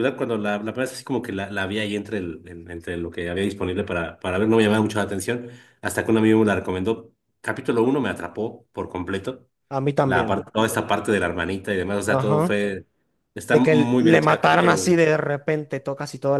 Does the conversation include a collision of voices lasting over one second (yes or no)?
yes